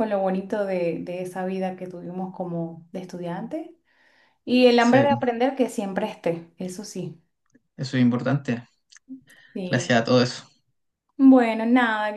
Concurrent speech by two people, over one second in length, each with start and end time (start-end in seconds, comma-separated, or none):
none